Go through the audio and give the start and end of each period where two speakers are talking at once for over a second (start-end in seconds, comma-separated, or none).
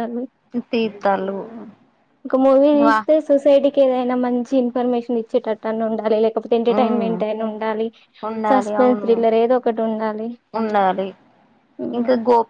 none